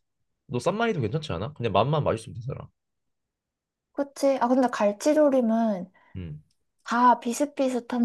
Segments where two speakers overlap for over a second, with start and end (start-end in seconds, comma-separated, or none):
none